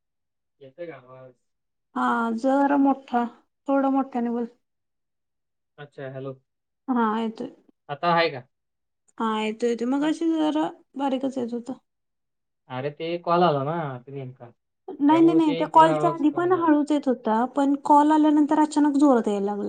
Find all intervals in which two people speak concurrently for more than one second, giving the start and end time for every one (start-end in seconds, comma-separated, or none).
15.1-16.7